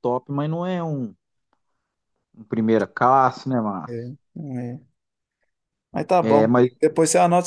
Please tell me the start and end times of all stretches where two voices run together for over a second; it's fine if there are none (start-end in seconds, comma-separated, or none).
none